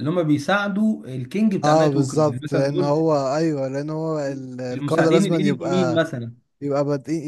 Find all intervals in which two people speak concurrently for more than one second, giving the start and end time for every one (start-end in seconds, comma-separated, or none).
1.6-3.0, 4.7-6.0